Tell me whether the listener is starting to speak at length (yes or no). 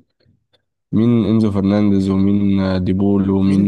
yes